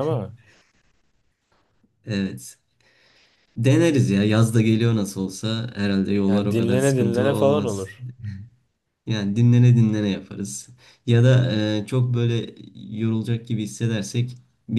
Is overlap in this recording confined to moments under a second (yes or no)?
no